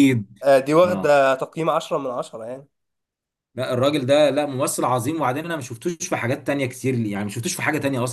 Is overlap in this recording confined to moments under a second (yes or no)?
yes